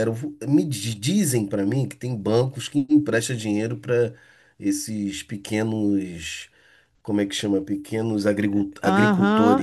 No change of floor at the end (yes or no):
no